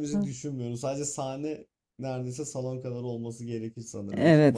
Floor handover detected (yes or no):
yes